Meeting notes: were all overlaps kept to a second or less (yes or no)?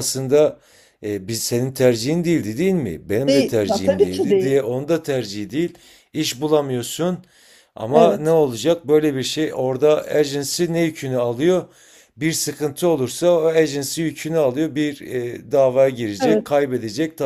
no